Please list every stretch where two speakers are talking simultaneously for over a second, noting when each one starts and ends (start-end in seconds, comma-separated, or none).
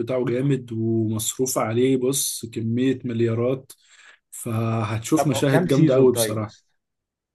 5.2-6.5